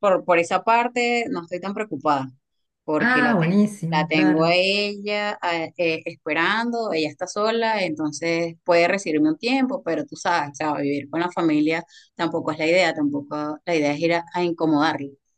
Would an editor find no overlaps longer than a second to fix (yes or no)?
no